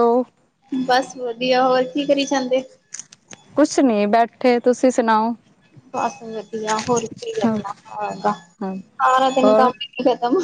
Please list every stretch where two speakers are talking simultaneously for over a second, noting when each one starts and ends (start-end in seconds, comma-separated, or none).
none